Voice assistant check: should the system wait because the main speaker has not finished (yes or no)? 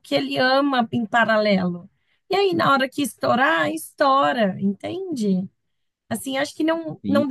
yes